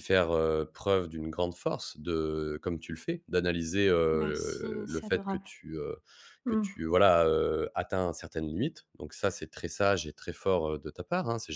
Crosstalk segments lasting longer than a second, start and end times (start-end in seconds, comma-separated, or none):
4.1-5.4